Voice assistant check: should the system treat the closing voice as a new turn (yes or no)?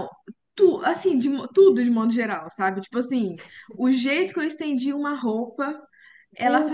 no